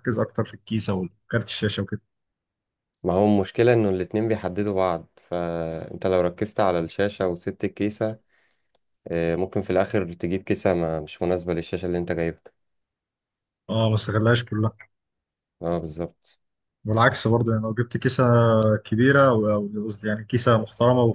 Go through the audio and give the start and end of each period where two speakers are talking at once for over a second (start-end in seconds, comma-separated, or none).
none